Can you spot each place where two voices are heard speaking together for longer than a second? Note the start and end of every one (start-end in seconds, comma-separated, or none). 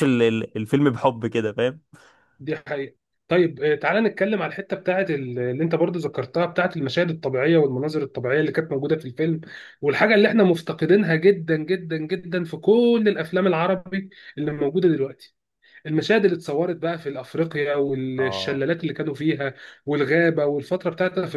none